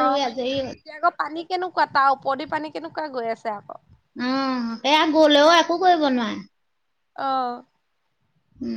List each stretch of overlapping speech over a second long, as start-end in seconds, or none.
none